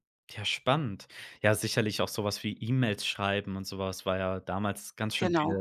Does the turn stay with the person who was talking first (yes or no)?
yes